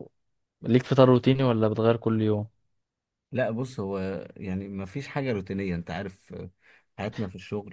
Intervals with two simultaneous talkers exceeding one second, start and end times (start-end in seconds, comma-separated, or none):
none